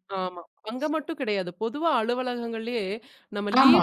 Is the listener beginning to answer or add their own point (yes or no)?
no